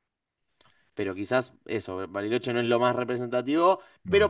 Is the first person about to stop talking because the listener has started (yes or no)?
no